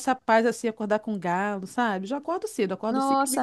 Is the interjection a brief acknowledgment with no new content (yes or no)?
yes